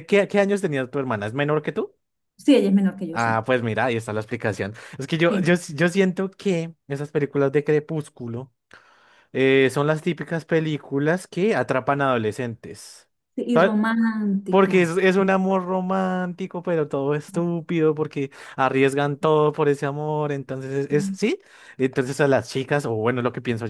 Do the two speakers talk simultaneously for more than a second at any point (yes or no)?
no